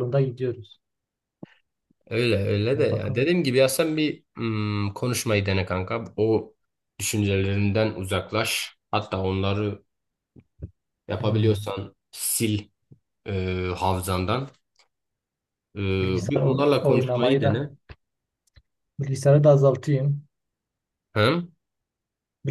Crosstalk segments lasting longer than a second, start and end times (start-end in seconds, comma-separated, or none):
16.3-17.7